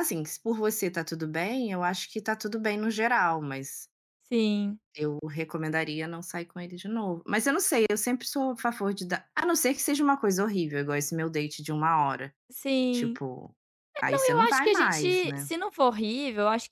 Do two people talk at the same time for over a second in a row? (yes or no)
yes